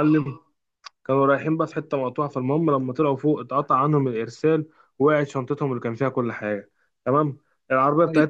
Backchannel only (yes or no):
yes